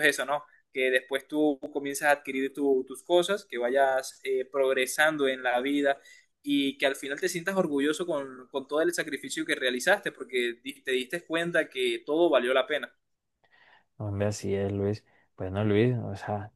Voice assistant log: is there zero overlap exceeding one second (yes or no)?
yes